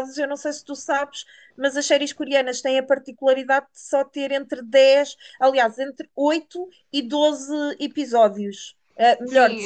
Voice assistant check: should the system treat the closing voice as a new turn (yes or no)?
yes